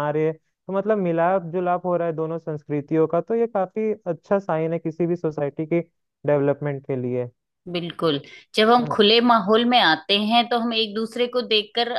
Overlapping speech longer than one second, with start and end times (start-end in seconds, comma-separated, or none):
none